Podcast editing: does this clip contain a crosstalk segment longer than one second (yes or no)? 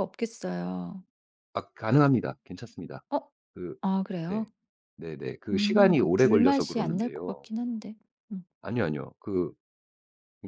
yes